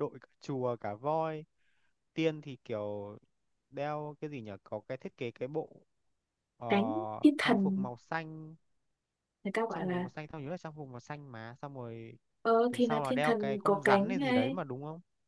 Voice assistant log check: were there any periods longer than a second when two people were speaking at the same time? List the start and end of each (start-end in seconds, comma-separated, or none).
12.7-14.6